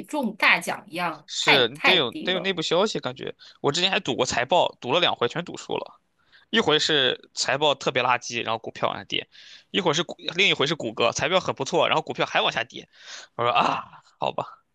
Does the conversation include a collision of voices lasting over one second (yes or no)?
yes